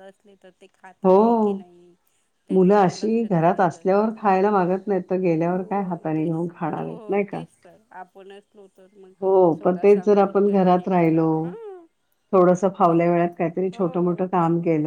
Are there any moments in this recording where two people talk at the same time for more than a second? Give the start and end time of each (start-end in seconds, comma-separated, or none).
2.5-4.4, 5.5-7.4, 9.6-11.3